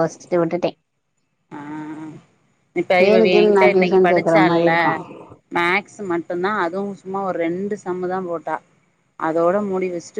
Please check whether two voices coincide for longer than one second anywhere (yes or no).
yes